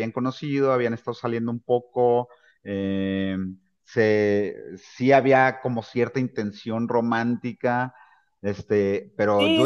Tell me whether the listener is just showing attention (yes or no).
yes